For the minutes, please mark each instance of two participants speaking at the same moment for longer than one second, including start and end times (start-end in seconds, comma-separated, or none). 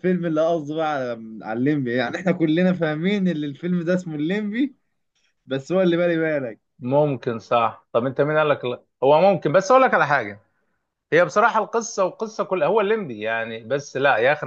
none